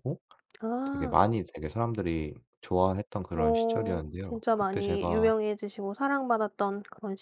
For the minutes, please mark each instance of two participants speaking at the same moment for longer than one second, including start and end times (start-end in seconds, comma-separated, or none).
3.4-5.3